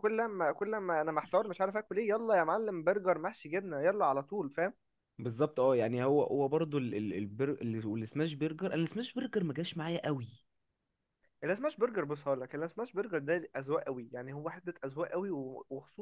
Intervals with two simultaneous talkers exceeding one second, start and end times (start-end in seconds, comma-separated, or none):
none